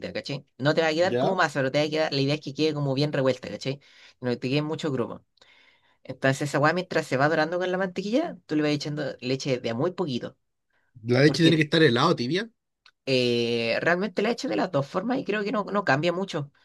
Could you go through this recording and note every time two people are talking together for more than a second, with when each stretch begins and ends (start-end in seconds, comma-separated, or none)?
none